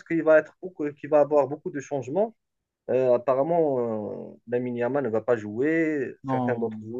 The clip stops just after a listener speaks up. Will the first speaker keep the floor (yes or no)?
yes